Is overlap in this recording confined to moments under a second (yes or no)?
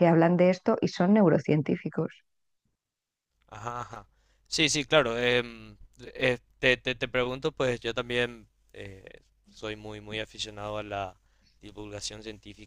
yes